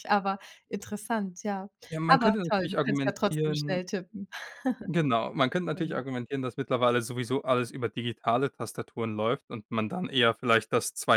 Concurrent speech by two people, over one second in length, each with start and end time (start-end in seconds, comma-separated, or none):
2.1-3.8